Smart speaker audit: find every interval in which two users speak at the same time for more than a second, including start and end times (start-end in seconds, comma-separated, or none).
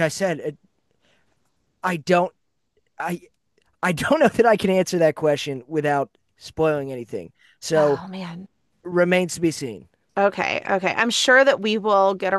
none